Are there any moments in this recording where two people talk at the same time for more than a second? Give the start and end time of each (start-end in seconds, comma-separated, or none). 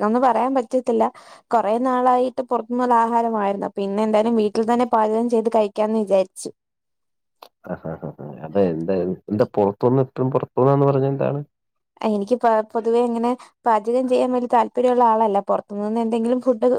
none